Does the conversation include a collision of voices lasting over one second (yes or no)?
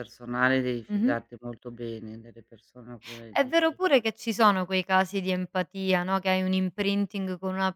no